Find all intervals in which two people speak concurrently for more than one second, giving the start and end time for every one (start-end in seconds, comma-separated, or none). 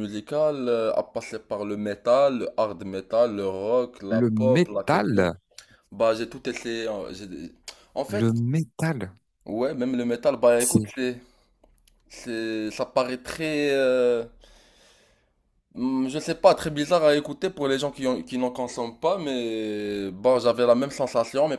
4.1-5.3